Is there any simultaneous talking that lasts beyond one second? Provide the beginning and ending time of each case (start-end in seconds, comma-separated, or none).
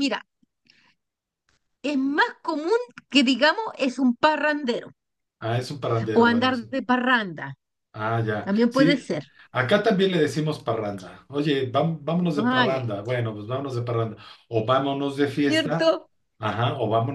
none